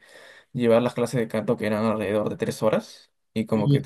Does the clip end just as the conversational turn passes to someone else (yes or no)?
no